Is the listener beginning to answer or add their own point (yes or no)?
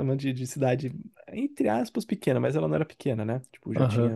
yes